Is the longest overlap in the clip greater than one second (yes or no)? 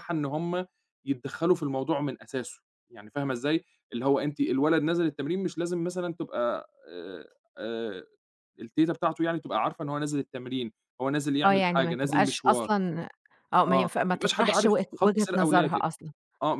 yes